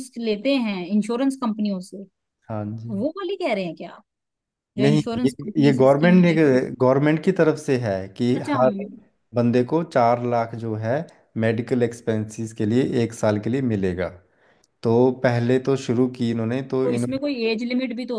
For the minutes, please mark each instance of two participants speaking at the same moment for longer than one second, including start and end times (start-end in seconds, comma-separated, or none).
4.8-6.3